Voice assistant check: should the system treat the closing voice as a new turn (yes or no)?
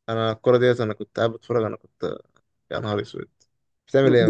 yes